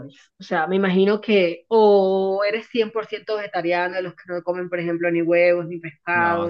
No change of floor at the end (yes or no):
no